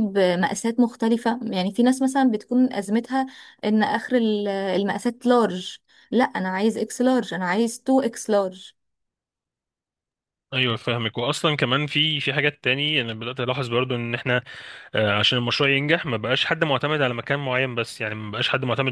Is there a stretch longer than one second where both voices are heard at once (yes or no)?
no